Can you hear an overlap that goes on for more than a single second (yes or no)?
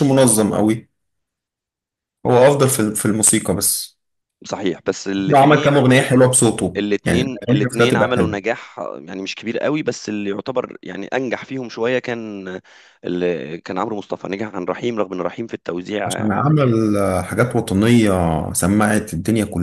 yes